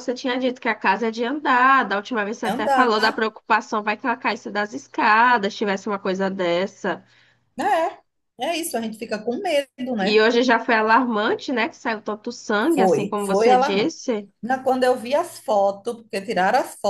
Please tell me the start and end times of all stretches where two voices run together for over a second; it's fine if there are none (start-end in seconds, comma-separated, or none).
12.7-13.9